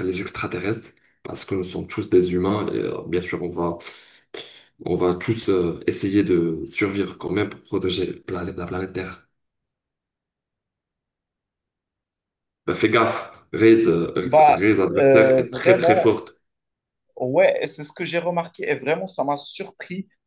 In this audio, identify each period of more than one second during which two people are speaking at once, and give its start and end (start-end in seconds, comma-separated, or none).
14.2-16.1